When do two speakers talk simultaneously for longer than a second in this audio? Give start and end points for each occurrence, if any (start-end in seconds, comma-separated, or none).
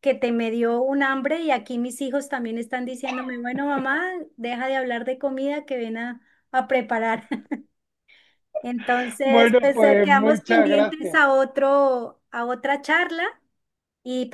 9.2-11.2